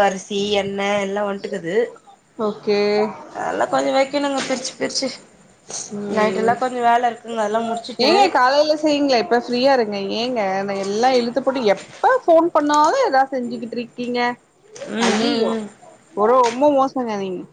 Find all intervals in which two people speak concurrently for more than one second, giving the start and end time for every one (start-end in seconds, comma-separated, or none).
none